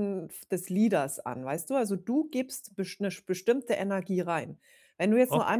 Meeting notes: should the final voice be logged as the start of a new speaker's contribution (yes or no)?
no